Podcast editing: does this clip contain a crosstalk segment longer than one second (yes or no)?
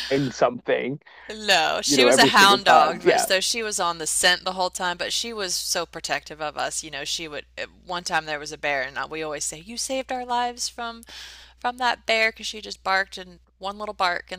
yes